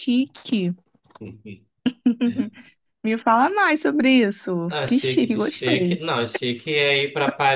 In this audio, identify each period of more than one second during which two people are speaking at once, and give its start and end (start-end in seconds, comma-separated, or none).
4.7-6.0